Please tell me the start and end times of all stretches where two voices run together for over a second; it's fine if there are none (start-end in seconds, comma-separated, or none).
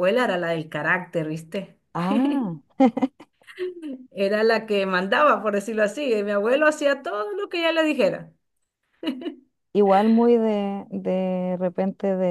none